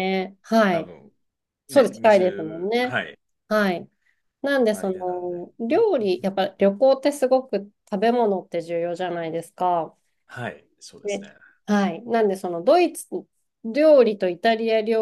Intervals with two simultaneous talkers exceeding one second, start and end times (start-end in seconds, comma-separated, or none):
1.7-3.0